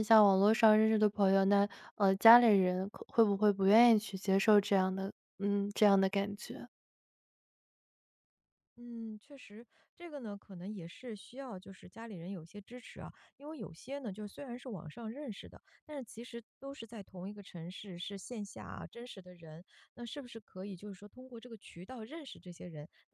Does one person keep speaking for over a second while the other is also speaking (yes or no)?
no